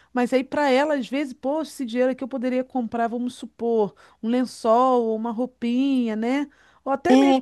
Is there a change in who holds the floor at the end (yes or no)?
no